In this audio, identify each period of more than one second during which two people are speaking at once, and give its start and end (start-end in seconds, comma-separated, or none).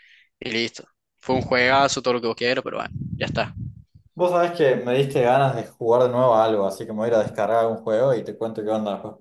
none